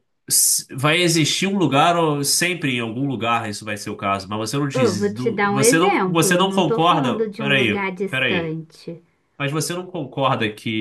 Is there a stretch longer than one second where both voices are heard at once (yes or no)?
yes